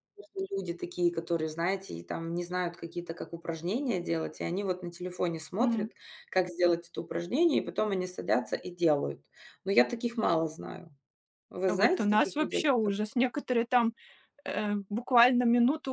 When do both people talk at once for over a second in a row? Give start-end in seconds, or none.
11.7-12.9